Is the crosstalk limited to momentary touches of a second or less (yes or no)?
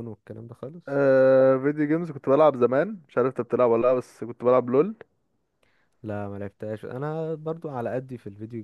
yes